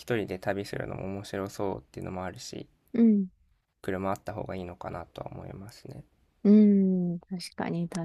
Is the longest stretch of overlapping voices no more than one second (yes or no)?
yes